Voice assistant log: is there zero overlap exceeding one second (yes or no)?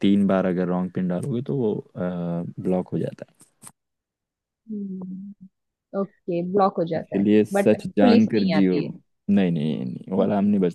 no